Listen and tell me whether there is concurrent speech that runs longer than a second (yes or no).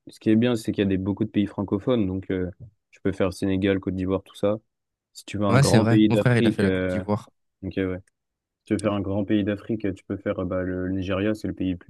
yes